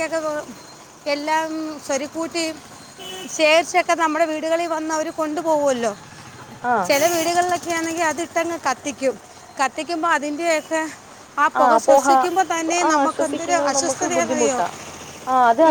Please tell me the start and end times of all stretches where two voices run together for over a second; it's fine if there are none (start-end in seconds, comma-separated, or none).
12.9-14.6